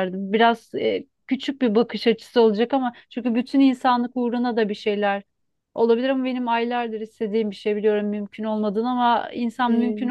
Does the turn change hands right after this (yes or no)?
no